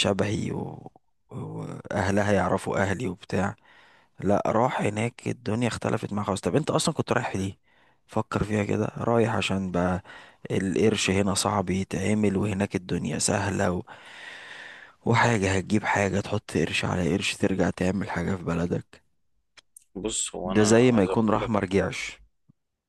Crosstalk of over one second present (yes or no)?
yes